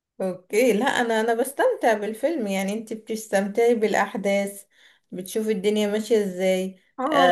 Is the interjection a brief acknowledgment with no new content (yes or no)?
no